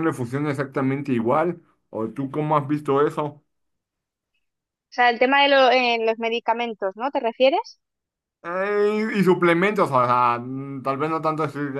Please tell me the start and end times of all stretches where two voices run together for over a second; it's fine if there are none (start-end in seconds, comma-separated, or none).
none